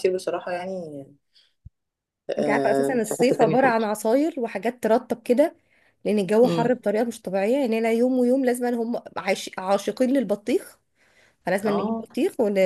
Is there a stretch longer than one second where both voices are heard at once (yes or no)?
yes